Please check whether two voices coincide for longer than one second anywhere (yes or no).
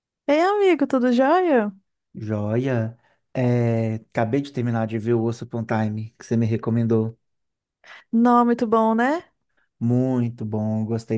no